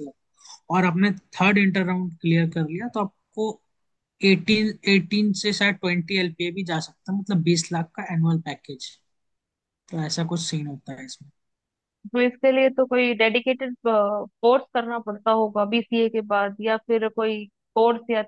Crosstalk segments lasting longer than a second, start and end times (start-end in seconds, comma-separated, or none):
none